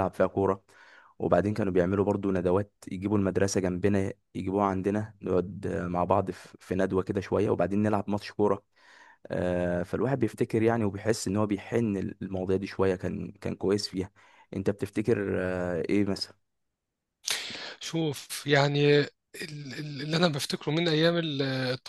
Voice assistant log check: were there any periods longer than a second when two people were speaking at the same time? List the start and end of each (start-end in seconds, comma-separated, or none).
none